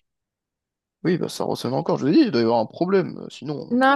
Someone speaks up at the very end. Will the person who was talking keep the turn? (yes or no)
no